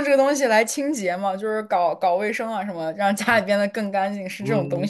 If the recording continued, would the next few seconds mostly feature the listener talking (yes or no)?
yes